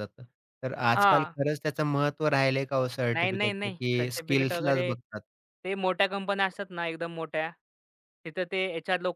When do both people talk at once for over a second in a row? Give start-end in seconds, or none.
3.1-4.8